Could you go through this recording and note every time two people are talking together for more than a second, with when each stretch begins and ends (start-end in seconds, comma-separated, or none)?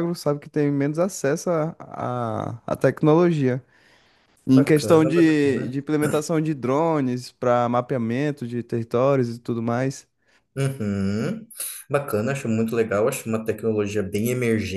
4.5-5.8